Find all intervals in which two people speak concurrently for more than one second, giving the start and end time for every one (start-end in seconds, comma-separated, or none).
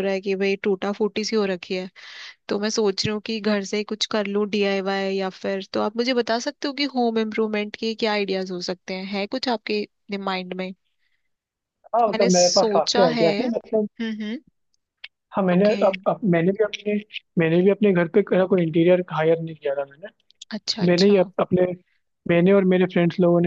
12.1-13.9